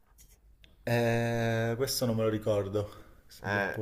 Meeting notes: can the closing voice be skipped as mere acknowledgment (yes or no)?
no